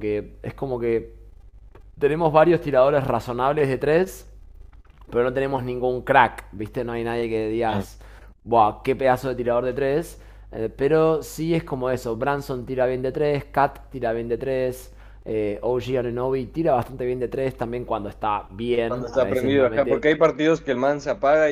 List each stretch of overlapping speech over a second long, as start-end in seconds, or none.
18.9-20.1